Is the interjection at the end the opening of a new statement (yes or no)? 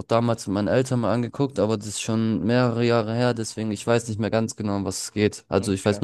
no